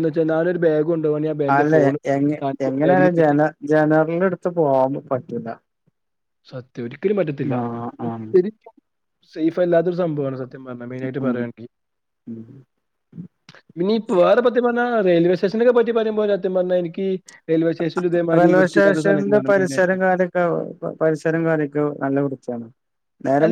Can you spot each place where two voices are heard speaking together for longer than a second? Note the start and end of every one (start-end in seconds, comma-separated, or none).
18.4-19.9